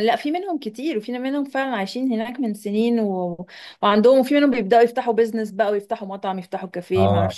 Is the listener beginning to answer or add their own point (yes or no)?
yes